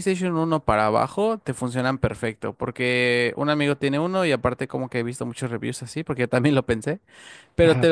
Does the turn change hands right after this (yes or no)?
no